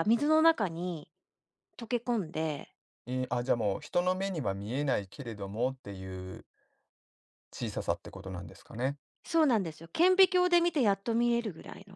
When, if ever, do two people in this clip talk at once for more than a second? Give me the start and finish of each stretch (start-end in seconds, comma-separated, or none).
none